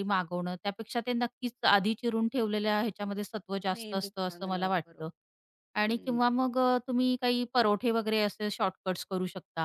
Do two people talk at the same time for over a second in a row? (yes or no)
yes